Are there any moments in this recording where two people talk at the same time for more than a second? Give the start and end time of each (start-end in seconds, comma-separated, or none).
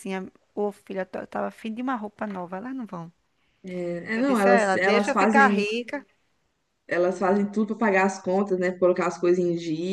4.1-5.6